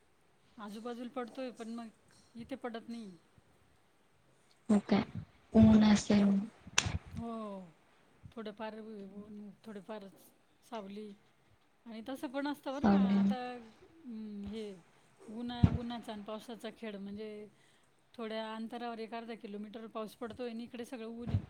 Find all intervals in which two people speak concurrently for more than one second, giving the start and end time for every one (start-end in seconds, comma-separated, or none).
none